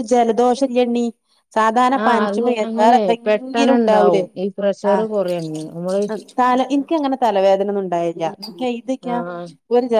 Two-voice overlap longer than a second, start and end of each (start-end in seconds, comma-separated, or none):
2.0-4.2